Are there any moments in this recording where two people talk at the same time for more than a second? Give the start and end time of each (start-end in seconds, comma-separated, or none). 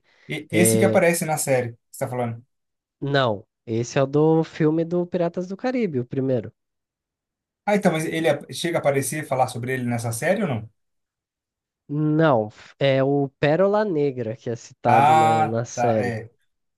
14.8-16.2